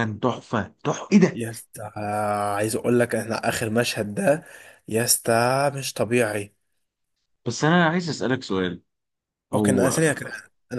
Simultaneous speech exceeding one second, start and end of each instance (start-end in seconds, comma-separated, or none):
none